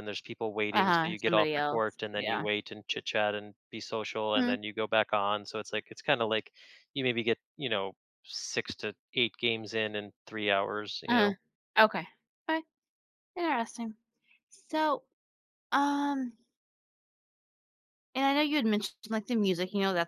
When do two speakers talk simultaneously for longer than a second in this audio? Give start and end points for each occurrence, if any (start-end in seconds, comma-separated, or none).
0.7-2.5